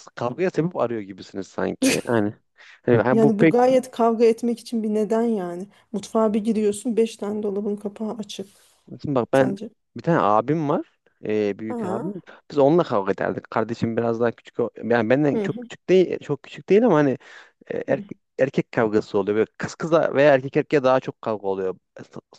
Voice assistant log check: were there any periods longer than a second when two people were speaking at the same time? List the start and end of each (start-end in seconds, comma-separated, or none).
none